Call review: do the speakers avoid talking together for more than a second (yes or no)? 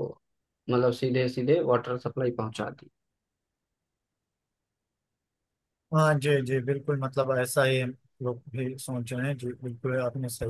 yes